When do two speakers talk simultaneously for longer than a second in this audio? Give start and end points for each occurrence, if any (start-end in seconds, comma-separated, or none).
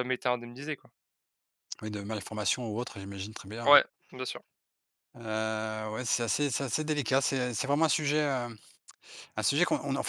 none